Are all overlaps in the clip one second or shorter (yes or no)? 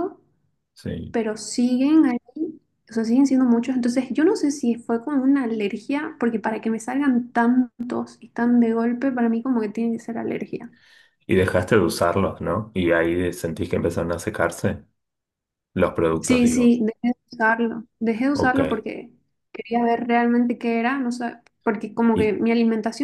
yes